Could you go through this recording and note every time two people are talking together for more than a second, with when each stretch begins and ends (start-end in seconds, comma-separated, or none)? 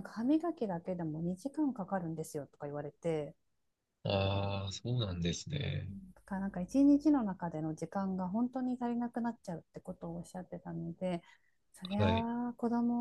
none